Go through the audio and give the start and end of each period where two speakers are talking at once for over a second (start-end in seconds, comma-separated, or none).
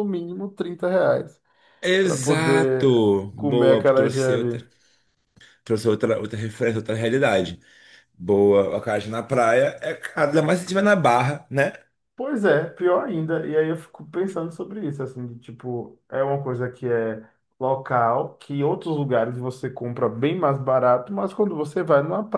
2.0-4.7